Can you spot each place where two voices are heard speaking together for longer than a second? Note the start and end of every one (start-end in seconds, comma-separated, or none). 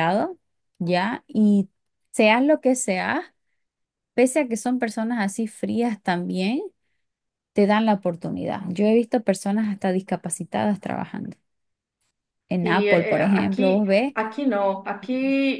12.6-14.1